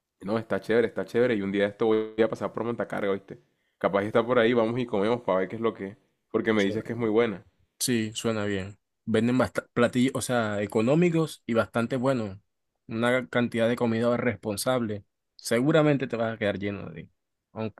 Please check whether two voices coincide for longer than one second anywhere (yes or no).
no